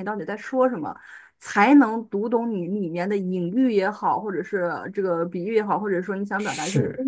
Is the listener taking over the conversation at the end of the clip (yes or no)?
no